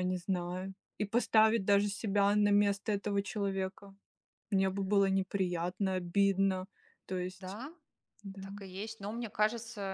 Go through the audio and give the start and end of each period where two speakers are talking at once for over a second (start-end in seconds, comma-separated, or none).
none